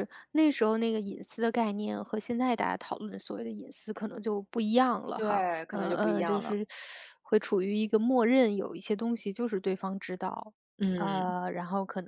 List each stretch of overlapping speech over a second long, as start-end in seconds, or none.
5.2-6.6